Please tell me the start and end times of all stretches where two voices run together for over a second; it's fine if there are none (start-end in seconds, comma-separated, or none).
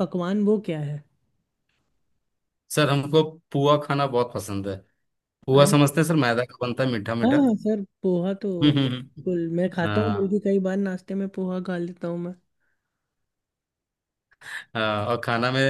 8.6-10.4